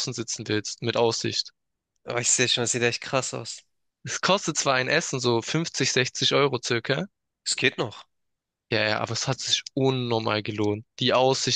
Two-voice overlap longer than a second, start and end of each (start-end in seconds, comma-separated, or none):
none